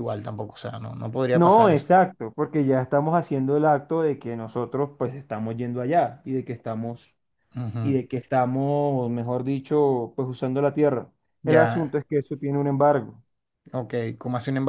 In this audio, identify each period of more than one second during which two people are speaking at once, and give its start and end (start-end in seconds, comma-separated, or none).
none